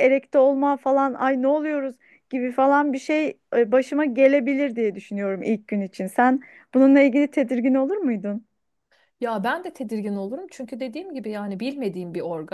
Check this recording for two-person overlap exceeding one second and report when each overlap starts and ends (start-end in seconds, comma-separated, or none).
none